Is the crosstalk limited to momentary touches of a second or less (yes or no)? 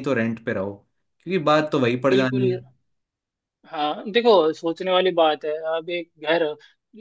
yes